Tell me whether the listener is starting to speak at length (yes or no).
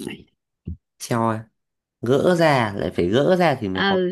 yes